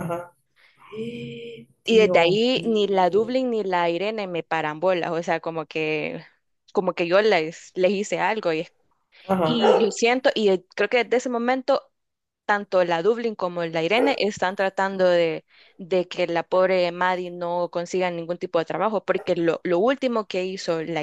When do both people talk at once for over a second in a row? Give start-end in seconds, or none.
1.8-3.4